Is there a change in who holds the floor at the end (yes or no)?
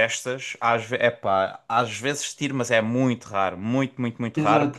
yes